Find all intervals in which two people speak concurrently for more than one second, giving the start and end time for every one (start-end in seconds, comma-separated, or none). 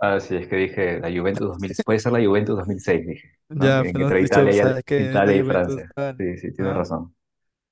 3.5-6.8